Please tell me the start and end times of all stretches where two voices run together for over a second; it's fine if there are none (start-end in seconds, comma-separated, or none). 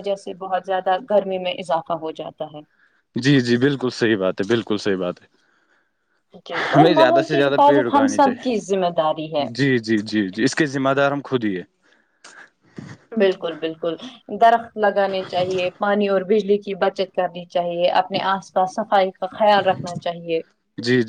6.7-8.5